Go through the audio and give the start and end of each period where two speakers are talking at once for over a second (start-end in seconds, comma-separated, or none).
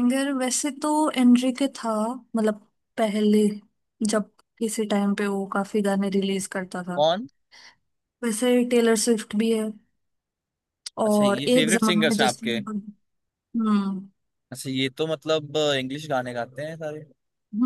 11.1-12.6